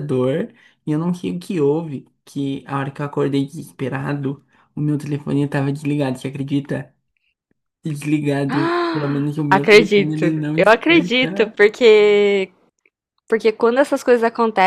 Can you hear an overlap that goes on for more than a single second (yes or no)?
yes